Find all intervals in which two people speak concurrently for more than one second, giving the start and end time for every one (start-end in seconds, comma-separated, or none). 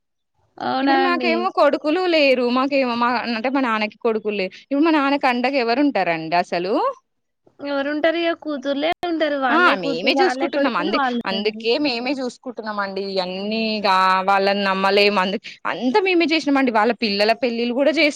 9.6-11.6